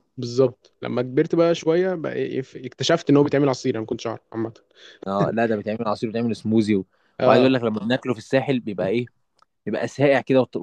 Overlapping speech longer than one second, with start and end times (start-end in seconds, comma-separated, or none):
none